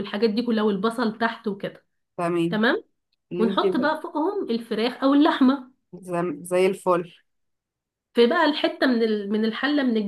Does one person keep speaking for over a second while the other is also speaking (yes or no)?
no